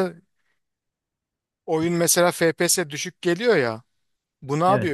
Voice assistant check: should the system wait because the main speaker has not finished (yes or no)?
yes